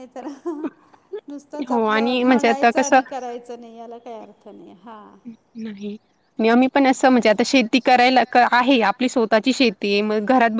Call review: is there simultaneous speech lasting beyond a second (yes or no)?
yes